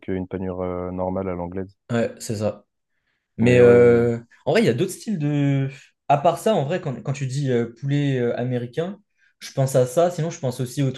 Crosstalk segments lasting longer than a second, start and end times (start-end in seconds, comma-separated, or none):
none